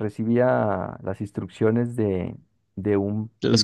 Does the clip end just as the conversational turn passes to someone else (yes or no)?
no